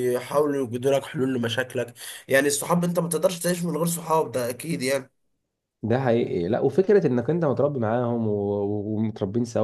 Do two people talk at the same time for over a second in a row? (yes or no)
no